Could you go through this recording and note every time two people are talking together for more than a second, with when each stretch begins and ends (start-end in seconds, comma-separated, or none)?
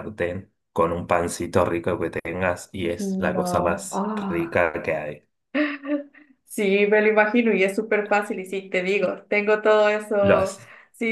3.0-4.6